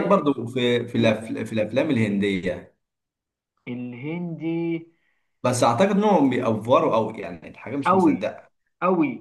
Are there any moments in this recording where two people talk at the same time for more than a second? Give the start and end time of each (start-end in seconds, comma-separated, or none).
none